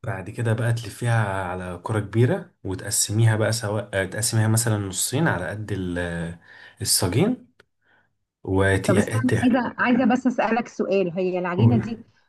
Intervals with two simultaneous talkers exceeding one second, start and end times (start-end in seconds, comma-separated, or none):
none